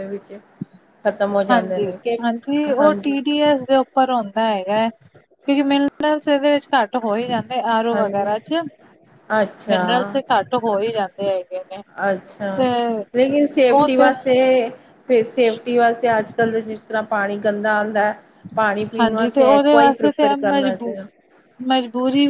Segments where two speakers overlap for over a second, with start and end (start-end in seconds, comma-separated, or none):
19.0-21.0